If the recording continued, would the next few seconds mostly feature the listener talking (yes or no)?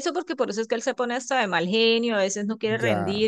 no